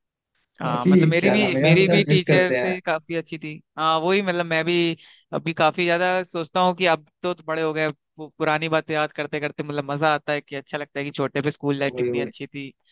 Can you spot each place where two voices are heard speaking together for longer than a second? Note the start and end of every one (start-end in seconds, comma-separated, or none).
0.7-2.7